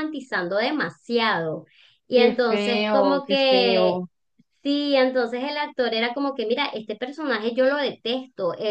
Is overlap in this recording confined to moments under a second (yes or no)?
no